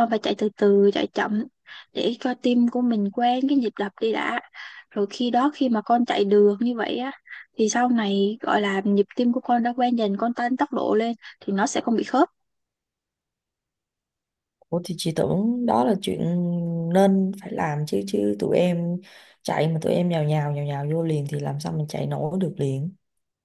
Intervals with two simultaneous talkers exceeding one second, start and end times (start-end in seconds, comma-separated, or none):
none